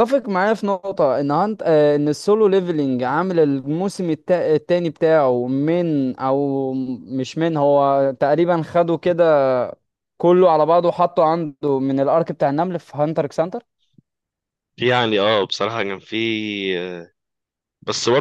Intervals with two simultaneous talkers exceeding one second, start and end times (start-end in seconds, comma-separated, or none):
none